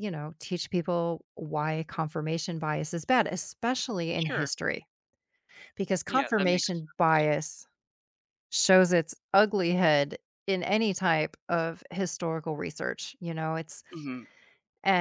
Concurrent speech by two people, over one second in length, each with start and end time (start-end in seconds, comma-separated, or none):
6.1-7.3